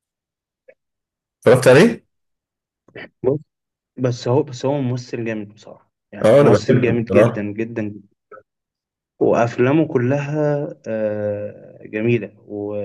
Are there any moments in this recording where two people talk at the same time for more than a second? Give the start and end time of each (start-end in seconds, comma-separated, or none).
6.2-7.5